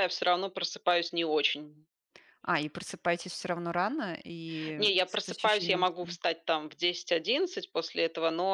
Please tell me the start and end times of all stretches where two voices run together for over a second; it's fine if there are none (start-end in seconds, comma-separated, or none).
4.8-6.2